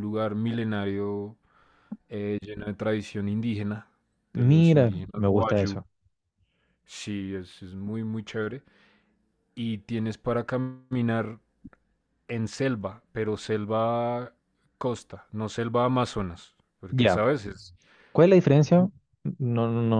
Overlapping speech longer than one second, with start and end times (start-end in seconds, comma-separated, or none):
4.3-5.8